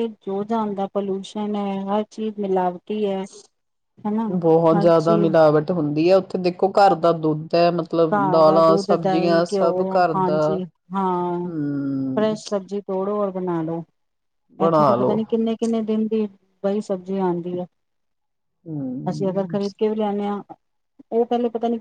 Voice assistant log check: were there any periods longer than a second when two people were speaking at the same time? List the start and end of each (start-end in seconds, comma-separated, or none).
8.1-10.6